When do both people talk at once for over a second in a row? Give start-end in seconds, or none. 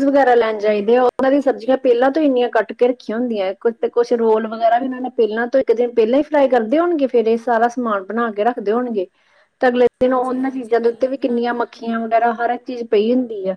10.0-12.1